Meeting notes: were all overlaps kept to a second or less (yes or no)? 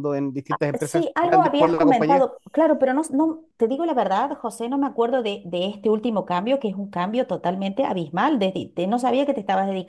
no